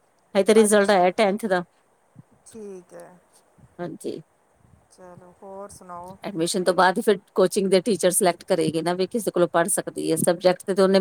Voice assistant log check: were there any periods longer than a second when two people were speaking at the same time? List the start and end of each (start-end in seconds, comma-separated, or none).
none